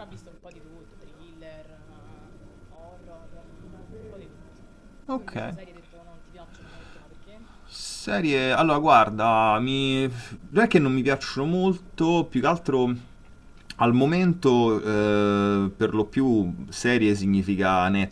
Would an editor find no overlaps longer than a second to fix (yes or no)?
yes